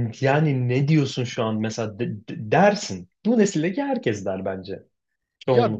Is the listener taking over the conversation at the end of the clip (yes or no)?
yes